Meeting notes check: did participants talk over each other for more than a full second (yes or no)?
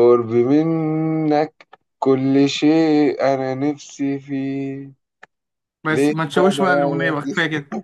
yes